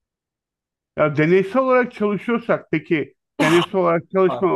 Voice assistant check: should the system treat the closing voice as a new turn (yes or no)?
no